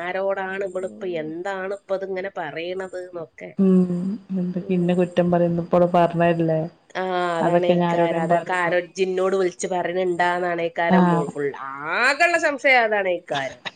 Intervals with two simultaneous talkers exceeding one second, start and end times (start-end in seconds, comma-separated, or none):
7.5-8.8